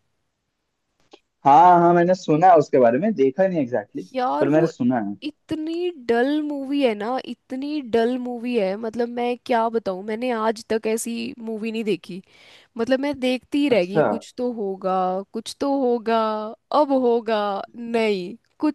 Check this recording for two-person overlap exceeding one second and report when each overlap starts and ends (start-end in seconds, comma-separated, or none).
none